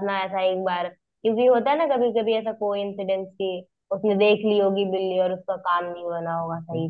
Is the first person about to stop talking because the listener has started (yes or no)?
no